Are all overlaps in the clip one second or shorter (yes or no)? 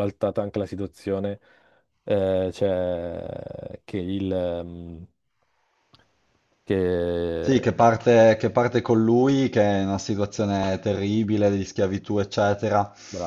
yes